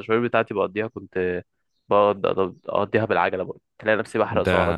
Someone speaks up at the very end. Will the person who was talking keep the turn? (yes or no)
no